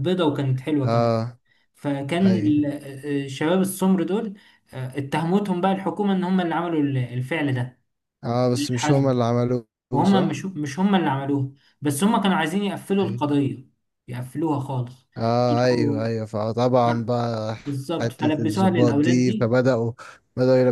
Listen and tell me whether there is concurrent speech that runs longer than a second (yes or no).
yes